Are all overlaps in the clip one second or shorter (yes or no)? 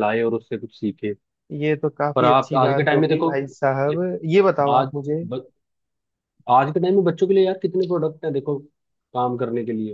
no